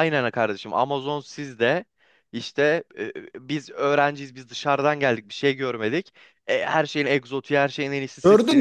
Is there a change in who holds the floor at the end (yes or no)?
yes